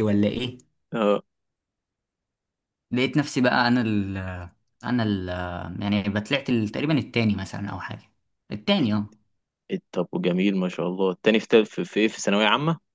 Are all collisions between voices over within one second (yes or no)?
yes